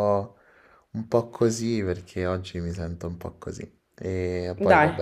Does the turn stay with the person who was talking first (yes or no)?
yes